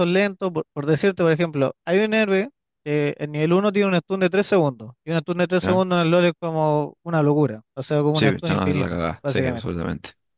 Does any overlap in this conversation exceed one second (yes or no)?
yes